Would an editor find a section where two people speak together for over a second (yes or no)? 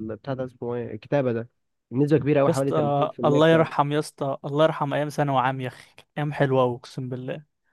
yes